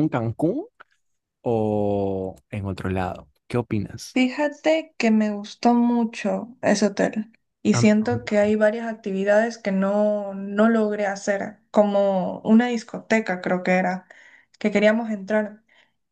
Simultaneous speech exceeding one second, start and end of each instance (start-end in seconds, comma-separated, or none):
none